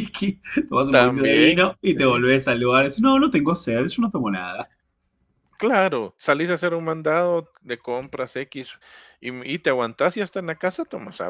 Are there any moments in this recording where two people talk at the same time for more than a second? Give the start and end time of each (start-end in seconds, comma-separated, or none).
0.9-2.3